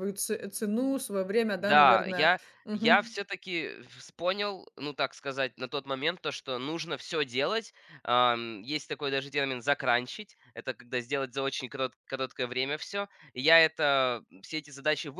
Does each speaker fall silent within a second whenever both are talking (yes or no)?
no